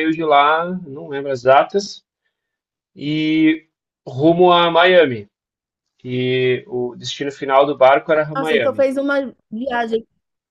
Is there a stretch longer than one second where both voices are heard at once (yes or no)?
no